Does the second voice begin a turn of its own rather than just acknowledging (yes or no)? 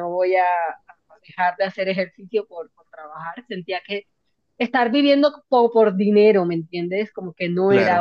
no